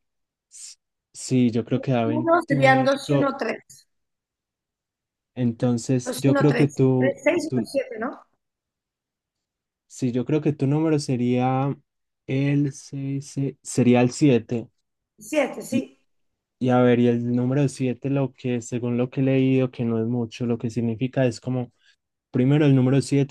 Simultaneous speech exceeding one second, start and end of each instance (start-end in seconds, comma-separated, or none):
2.0-3.3, 6.0-7.7